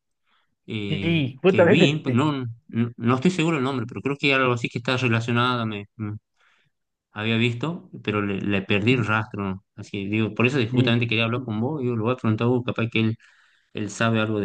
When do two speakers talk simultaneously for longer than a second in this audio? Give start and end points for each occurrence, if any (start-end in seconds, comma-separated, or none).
0.9-2.2